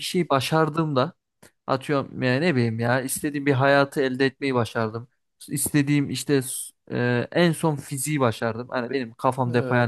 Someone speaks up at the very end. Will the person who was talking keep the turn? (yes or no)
yes